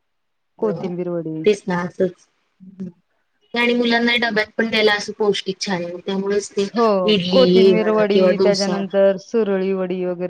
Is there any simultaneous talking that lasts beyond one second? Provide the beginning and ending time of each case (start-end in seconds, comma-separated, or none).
7.3-8.7